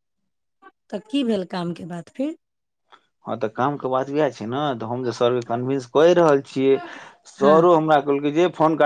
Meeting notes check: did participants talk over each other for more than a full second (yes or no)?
no